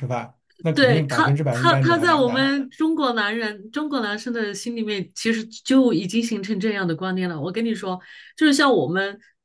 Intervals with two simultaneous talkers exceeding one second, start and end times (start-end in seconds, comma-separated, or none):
0.7-2.5